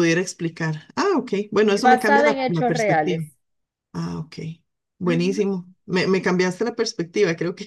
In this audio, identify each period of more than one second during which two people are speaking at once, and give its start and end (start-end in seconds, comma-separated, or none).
1.7-3.2